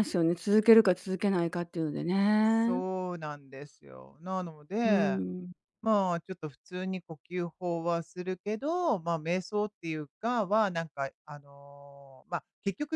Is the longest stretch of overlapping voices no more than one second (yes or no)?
yes